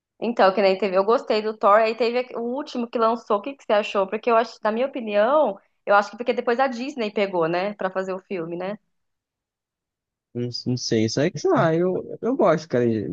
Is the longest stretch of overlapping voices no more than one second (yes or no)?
yes